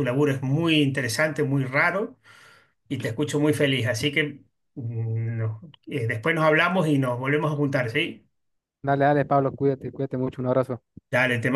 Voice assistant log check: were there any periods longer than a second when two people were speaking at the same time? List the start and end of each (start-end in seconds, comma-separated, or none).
none